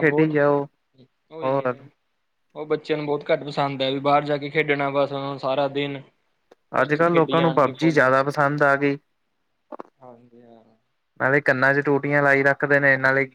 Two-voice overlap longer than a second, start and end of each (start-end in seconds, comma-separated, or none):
6.8-8.1